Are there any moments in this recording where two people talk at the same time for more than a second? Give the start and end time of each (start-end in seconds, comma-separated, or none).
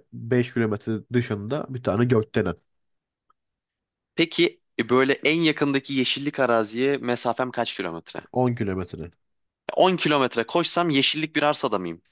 none